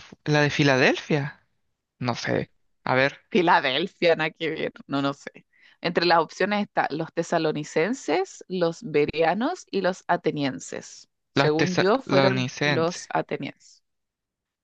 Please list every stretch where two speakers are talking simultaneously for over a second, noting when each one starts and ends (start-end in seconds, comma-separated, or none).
11.3-13.0